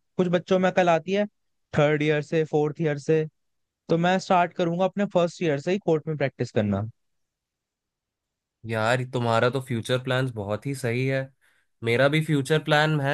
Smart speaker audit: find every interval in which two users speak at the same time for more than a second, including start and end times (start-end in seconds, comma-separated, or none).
none